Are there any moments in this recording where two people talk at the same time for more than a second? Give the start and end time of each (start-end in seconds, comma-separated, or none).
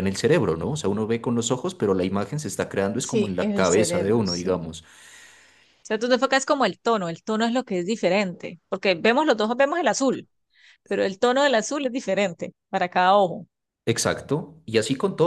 3.0-4.7